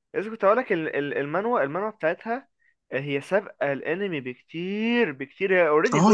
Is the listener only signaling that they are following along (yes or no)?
no